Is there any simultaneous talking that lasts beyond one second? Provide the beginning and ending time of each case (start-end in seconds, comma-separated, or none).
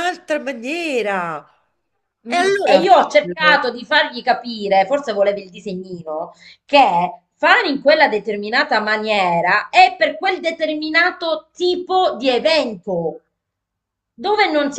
2.3-3.7